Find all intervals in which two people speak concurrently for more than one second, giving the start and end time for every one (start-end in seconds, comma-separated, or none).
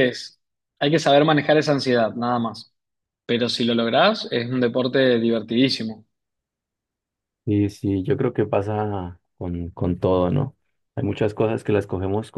none